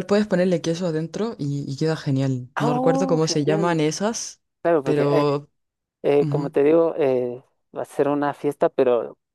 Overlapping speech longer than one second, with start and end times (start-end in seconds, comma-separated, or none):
2.5-3.8